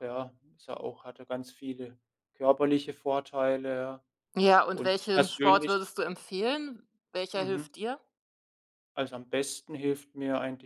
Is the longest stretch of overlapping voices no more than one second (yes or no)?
no